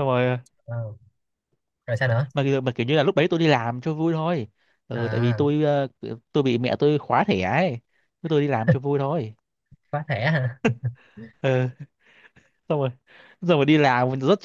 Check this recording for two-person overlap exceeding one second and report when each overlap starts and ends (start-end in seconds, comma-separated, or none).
none